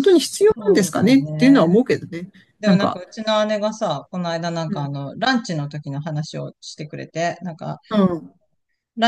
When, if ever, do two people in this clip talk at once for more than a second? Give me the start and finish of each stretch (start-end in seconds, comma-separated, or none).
0.6-1.8